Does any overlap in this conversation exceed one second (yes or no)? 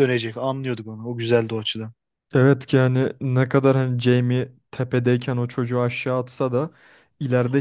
no